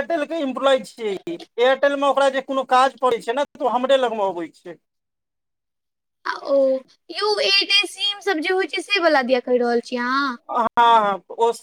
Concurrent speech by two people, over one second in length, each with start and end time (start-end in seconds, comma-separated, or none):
none